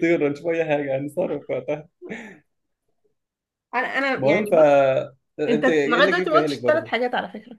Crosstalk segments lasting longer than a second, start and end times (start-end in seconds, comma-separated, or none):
5.5-6.9